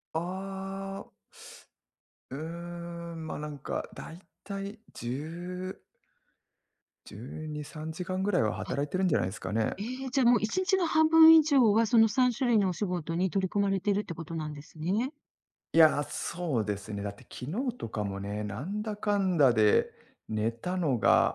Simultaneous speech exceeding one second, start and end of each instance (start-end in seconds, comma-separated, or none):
none